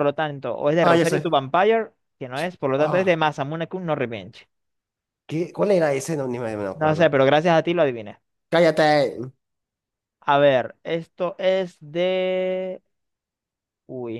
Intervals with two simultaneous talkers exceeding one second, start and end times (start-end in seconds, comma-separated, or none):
none